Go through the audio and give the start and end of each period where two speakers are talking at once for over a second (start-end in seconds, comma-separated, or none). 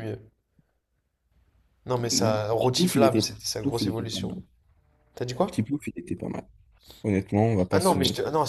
2.1-4.3